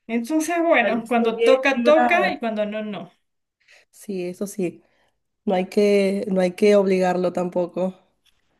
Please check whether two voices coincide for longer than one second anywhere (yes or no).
yes